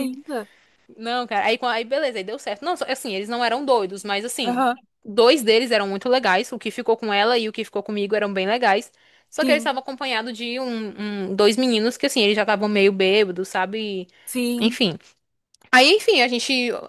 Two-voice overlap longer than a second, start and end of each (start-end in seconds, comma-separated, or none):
none